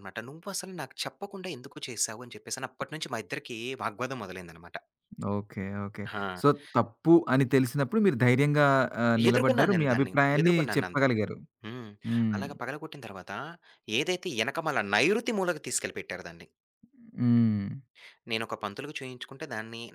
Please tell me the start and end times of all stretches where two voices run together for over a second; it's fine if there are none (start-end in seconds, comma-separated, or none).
9.3-11.2